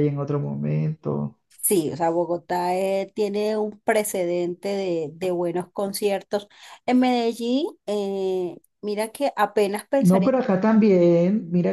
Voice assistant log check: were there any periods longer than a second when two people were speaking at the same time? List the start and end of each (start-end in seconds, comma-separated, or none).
none